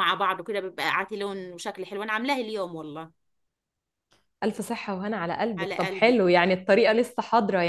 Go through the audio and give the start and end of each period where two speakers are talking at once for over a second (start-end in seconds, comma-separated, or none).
5.6-6.9